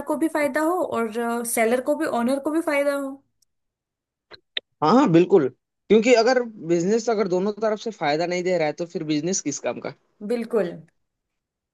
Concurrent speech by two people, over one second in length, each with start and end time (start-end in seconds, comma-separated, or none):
none